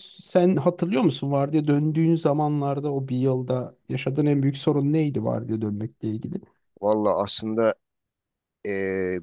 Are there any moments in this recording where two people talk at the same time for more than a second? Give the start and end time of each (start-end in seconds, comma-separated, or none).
none